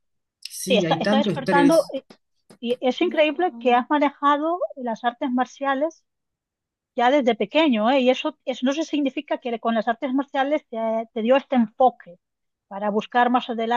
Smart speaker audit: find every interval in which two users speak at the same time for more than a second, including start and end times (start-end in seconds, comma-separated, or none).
0.6-1.9